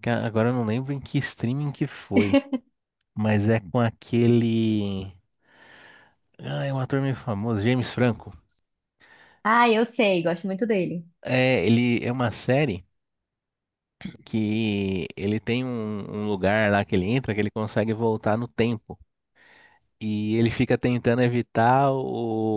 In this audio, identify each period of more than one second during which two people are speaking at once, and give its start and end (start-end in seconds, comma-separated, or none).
none